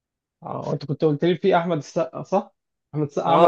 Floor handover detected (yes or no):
yes